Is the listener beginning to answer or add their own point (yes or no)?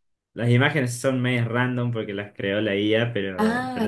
yes